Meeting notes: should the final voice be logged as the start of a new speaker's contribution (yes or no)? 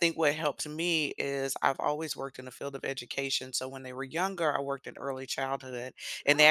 no